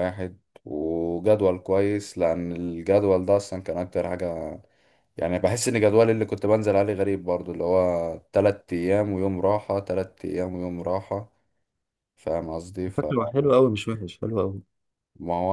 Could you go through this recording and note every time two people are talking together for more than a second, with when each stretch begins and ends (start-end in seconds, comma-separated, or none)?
none